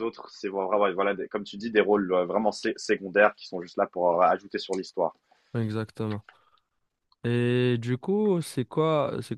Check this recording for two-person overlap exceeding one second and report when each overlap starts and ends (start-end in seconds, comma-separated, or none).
none